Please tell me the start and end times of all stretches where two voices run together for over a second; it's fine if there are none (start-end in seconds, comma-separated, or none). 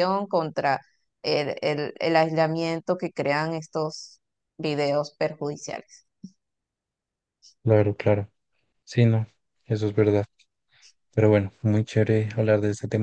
none